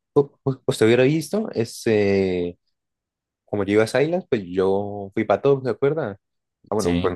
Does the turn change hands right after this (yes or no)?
no